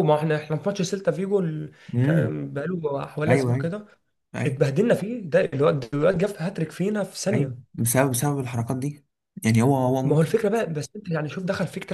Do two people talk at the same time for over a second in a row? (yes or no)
no